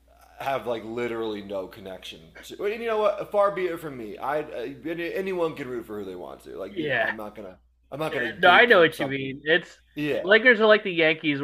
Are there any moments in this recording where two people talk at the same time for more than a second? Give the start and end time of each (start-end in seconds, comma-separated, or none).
8.1-9.4